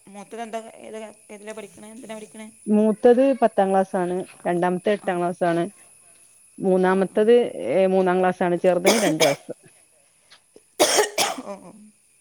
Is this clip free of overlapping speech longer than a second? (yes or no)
yes